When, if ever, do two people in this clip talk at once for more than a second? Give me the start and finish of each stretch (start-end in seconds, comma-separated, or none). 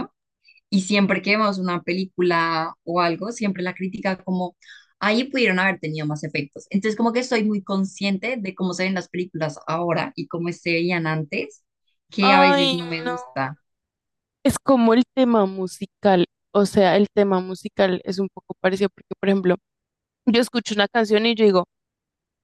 12.2-13.5